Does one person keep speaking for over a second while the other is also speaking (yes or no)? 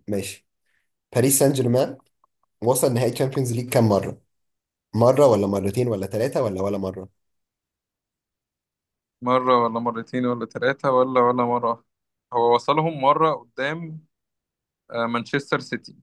no